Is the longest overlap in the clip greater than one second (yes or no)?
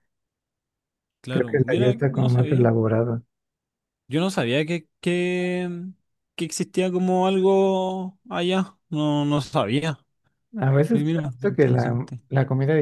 yes